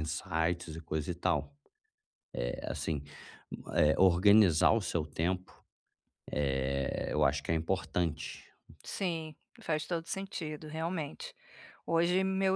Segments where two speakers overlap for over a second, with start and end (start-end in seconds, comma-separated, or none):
none